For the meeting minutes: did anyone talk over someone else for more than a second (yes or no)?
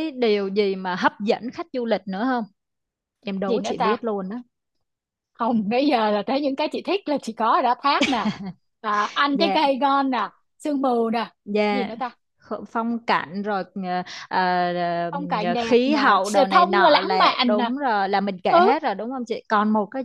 yes